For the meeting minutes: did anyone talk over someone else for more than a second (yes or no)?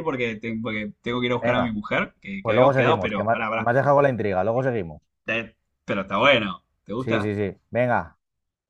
yes